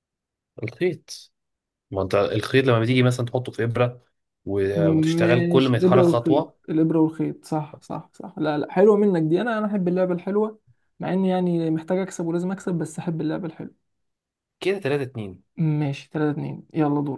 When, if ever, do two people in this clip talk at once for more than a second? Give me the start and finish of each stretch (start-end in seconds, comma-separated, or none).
4.7-6.6